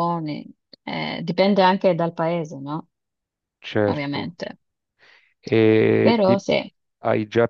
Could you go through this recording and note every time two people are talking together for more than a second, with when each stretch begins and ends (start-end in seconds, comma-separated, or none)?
none